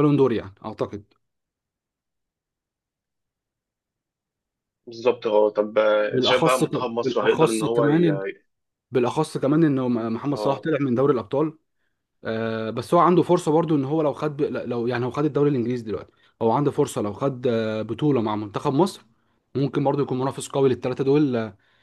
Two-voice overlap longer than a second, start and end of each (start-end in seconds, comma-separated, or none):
6.1-8.1